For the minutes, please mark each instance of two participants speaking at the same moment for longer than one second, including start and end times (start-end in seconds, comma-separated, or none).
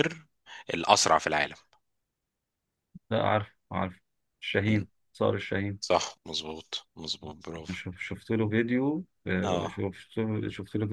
none